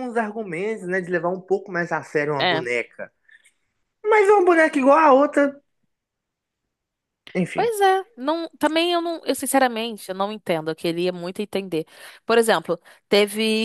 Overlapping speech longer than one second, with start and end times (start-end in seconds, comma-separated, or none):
none